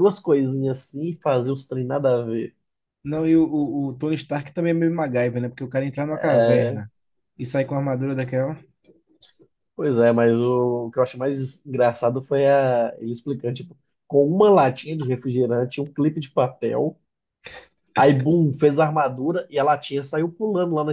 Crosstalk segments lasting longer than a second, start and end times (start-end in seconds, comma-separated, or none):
none